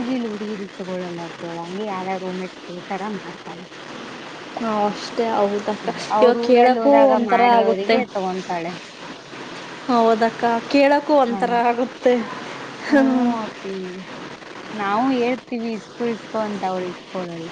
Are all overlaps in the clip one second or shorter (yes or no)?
no